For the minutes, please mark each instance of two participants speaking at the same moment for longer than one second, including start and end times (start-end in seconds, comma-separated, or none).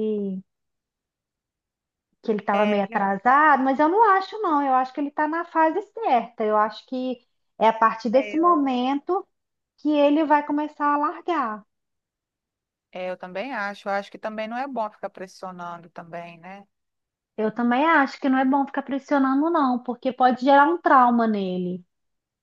none